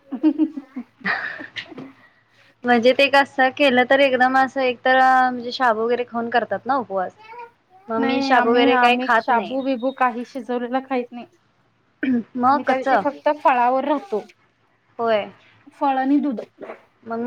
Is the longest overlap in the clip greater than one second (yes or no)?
yes